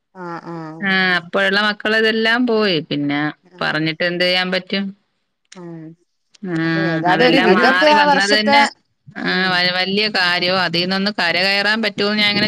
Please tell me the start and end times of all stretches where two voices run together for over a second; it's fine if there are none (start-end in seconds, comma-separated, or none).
6.7-8.6